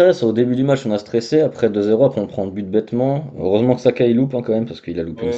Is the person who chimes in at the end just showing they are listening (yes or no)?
no